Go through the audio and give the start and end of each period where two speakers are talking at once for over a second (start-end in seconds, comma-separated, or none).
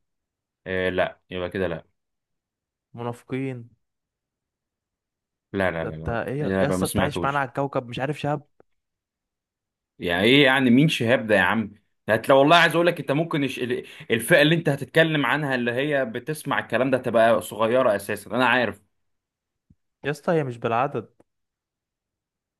5.7-7.5